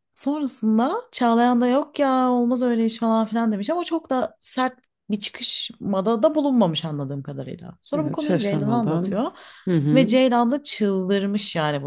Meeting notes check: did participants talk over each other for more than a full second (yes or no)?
yes